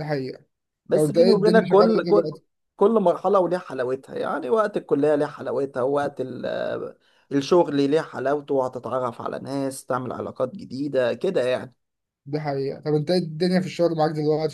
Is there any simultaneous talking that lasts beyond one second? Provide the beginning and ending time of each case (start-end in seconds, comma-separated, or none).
0.9-2.3